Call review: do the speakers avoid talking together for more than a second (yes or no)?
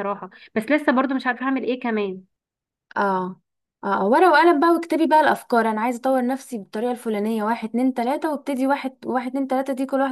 yes